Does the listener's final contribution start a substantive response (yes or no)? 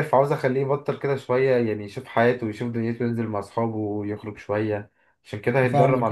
yes